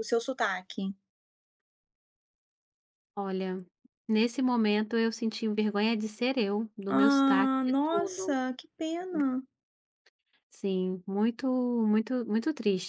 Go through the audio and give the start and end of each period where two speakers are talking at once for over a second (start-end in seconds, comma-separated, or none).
6.9-8.4